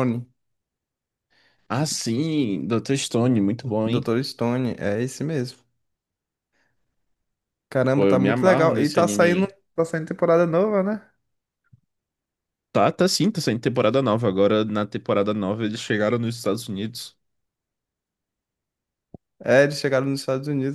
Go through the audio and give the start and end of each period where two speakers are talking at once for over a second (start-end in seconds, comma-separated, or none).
7.9-9.5